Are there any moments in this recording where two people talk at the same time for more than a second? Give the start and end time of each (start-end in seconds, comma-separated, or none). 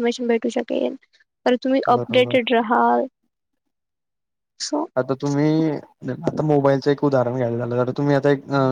none